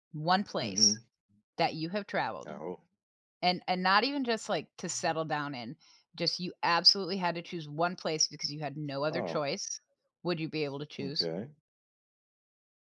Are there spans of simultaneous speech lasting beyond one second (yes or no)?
no